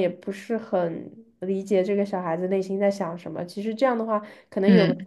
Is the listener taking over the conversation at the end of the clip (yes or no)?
no